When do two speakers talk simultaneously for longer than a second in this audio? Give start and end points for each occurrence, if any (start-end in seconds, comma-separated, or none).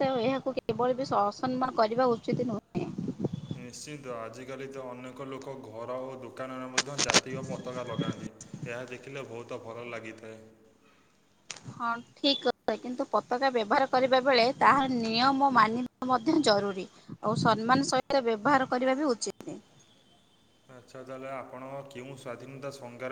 none